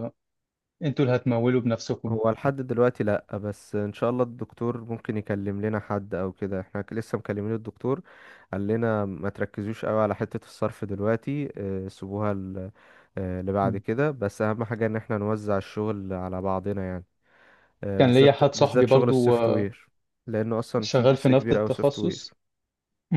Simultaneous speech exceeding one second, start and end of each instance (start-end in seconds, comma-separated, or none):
18.0-19.3, 20.8-22.3